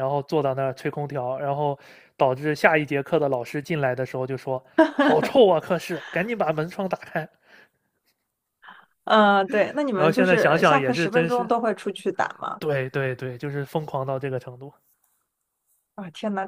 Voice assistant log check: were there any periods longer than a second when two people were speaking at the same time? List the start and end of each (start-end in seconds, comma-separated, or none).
9.9-11.5